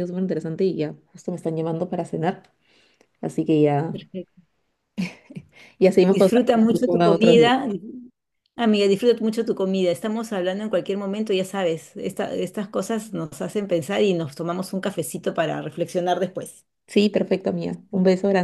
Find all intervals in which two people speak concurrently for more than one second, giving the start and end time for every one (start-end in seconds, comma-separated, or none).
6.0-7.4